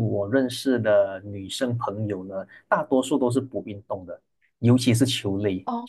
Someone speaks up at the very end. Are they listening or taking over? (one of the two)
listening